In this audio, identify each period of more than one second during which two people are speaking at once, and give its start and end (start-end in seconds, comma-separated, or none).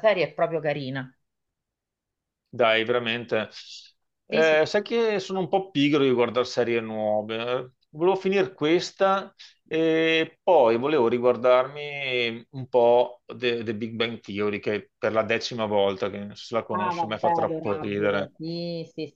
16.7-18.3